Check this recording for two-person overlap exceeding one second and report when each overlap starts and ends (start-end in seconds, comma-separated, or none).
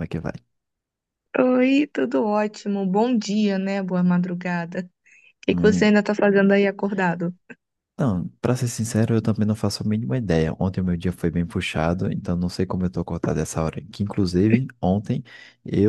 none